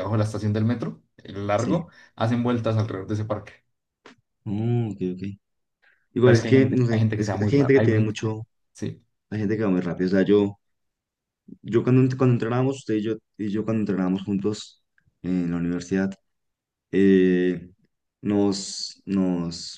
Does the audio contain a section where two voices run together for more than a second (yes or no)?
yes